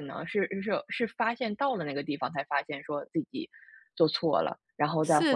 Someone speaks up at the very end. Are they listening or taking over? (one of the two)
taking over